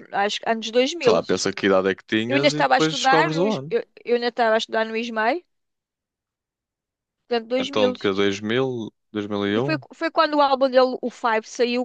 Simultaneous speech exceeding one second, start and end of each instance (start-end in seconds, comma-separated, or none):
2.3-3.8